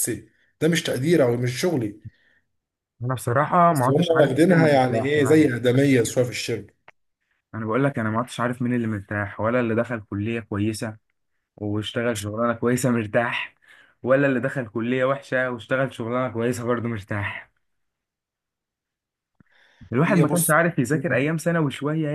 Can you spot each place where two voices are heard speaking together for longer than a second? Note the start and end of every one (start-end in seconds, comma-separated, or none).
3.7-5.5